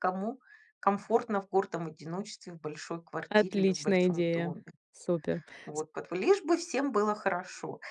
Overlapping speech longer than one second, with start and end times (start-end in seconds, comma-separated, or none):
3.3-4.6